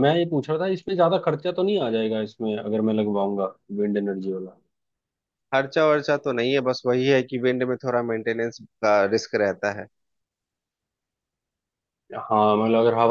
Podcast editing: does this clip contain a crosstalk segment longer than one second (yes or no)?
no